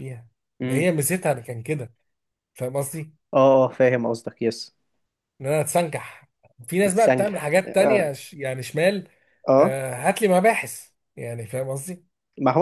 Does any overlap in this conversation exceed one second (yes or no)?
yes